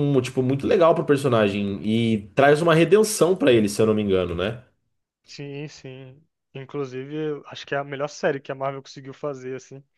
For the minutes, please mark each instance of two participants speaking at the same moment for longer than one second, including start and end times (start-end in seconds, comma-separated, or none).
none